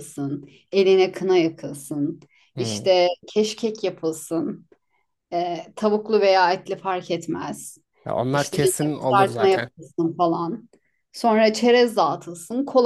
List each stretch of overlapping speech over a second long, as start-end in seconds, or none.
8.3-9.7